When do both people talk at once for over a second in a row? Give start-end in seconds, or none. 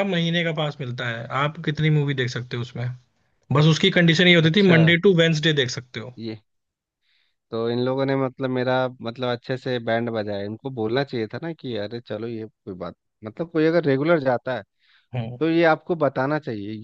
none